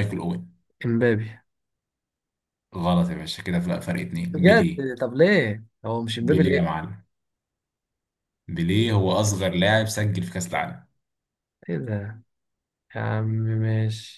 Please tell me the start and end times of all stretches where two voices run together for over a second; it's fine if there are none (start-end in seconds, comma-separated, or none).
none